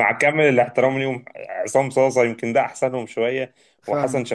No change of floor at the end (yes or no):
yes